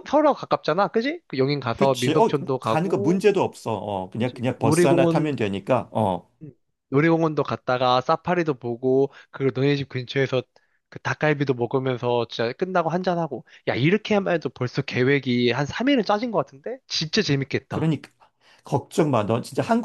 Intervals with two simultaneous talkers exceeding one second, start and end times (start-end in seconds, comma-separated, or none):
1.8-3.2, 4.1-5.4